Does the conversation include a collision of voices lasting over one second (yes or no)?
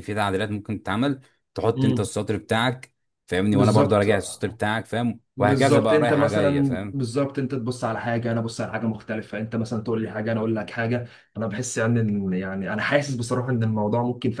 yes